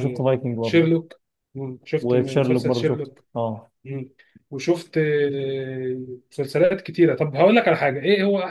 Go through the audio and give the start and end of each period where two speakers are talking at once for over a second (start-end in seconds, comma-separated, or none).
2.0-3.2